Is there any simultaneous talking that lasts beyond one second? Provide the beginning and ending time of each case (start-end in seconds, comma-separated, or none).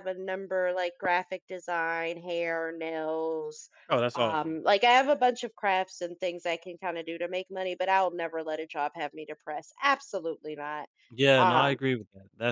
none